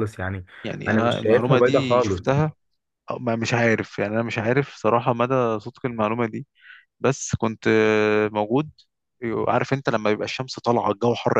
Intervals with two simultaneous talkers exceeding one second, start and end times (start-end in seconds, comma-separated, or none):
0.9-2.2